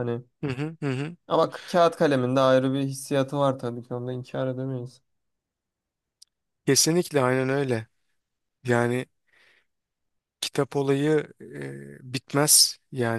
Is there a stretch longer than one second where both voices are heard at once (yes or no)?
no